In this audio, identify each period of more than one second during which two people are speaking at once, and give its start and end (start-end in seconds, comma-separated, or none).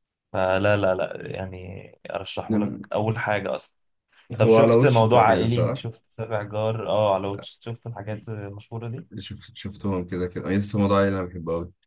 4.4-5.8